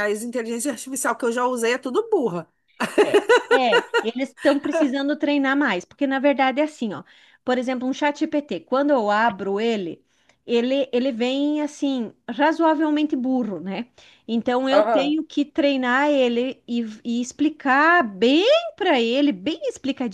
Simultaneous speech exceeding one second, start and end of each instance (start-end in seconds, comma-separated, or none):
none